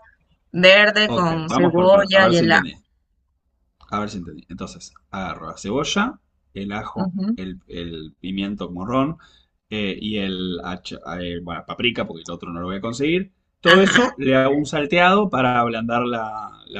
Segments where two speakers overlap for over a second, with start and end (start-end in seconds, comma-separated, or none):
1.1-2.8